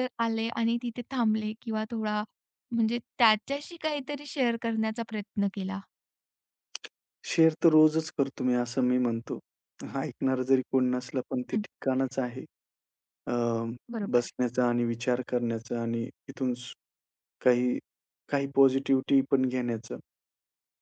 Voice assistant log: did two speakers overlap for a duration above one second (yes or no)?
no